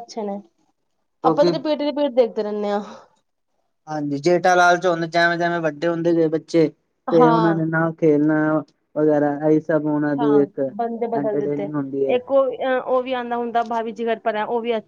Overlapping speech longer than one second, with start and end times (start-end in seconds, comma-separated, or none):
none